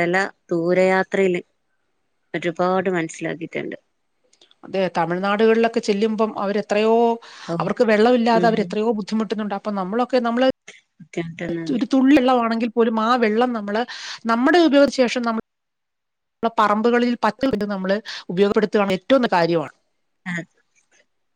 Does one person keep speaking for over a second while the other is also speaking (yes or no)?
no